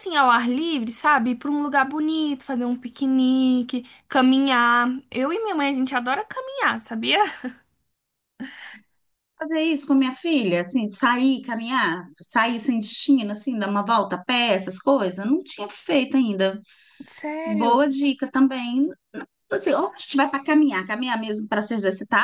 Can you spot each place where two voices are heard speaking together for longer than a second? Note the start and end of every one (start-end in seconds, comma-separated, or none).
none